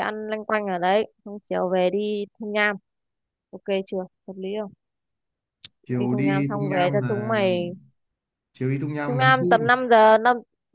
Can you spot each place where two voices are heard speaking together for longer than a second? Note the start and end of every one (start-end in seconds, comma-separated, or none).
6.0-7.5